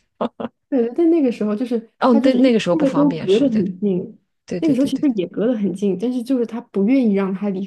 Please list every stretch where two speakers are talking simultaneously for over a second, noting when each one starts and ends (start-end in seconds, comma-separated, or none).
2.0-3.6